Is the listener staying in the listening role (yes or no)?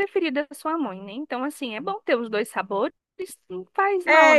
no